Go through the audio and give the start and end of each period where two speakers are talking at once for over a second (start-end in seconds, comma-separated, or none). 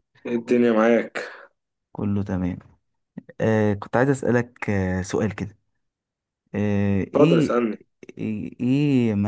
none